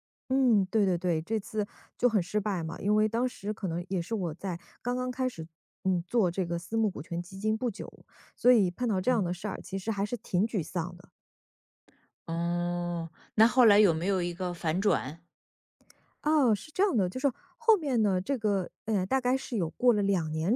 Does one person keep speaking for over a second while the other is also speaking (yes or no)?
no